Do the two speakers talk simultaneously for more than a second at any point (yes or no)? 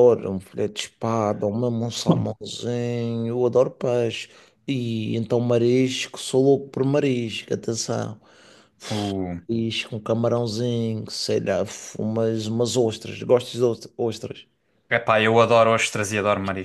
no